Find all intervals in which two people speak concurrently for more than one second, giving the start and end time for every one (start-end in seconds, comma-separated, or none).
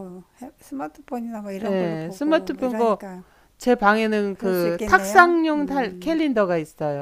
1.6-3.1, 4.3-6.2